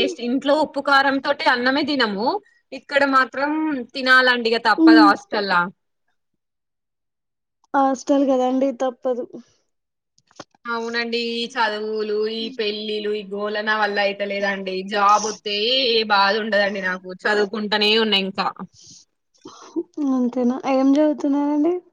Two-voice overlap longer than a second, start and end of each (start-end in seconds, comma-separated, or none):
none